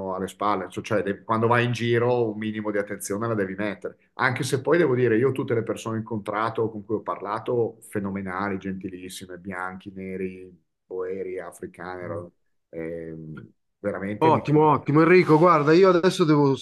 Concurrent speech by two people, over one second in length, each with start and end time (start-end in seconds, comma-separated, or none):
none